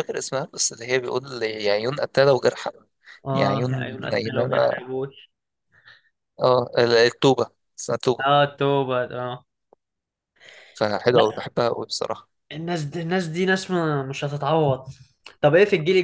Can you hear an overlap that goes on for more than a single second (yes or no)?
yes